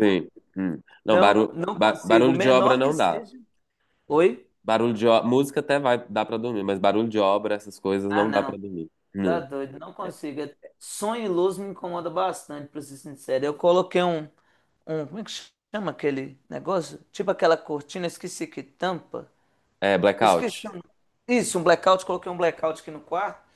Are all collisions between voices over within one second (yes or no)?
no